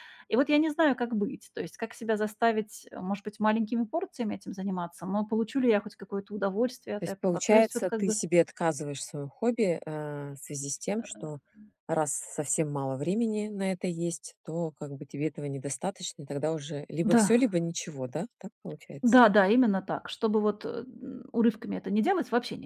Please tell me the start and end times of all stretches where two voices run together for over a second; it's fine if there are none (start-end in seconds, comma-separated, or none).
7.0-8.2